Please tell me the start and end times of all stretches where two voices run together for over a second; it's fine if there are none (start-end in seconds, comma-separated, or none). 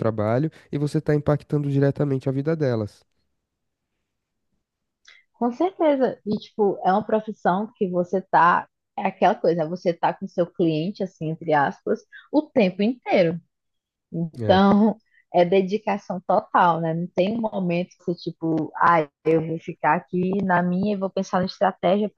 none